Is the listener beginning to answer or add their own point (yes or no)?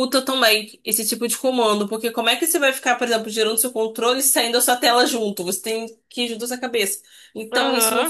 no